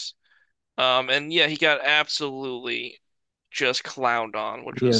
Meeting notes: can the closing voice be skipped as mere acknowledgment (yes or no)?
no